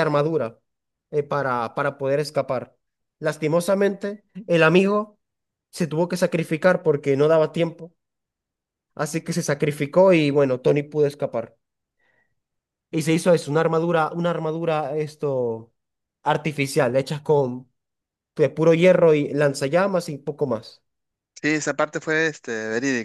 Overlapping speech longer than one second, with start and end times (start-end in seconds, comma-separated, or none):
none